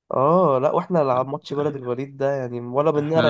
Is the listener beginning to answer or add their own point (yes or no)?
no